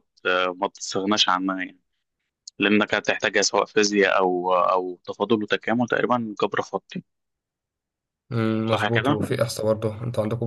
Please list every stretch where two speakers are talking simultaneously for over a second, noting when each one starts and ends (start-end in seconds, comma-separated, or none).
none